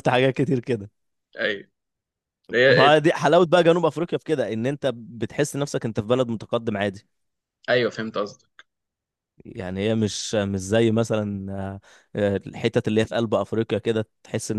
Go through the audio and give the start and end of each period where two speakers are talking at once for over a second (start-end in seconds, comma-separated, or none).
none